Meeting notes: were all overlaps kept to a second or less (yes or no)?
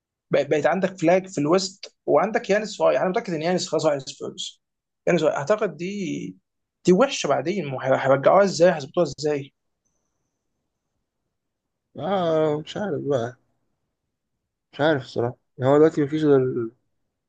yes